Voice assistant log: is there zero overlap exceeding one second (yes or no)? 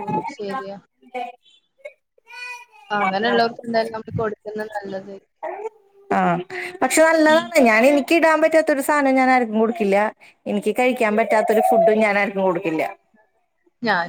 yes